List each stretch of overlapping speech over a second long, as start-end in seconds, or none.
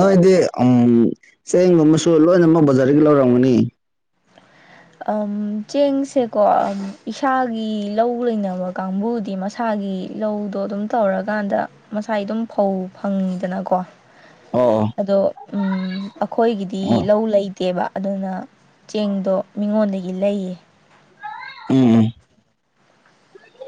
none